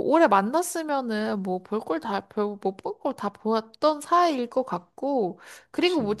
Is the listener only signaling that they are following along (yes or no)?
yes